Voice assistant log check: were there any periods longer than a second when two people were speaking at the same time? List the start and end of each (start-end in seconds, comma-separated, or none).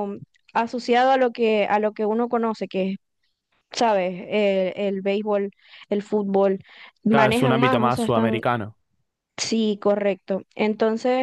7.1-8.4